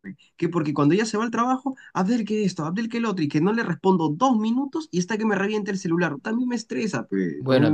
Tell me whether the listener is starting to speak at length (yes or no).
yes